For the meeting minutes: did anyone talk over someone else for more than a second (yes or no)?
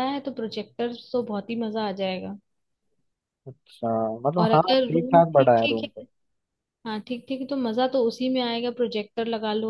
yes